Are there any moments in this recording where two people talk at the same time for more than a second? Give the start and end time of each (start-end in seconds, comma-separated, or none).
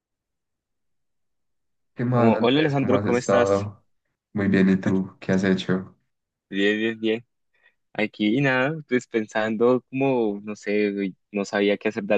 2.1-3.7